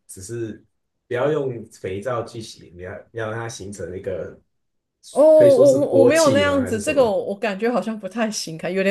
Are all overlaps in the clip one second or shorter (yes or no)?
no